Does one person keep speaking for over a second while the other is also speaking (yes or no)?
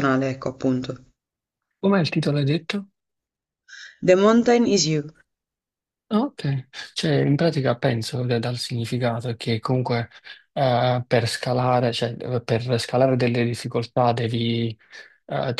no